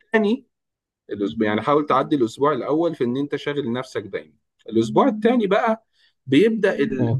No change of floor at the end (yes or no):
yes